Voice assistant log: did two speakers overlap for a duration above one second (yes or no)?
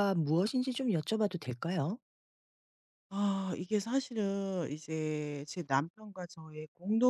no